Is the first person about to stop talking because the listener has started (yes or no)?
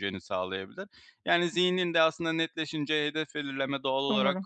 no